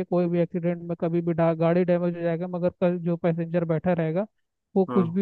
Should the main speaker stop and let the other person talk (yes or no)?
no